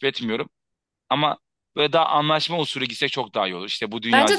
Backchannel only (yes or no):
no